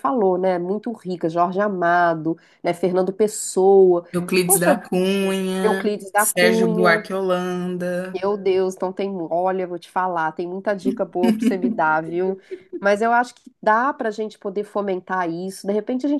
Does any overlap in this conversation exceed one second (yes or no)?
yes